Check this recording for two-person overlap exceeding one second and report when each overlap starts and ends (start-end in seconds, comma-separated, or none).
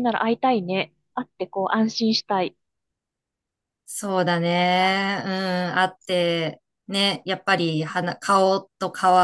none